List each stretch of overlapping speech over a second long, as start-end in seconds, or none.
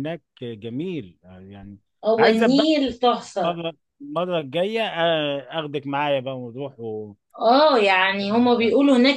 none